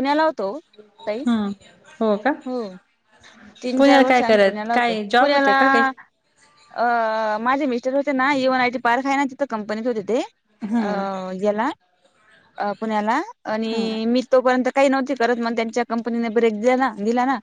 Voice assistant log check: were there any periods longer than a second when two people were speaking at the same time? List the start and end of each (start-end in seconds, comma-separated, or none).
3.8-5.8